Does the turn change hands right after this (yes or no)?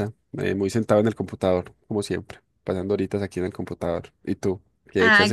yes